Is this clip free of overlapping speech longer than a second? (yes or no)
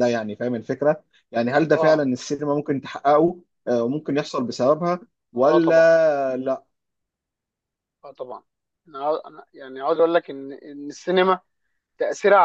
yes